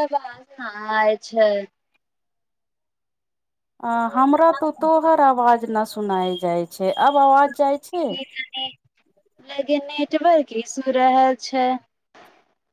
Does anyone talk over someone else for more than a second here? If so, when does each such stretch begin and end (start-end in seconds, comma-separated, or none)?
none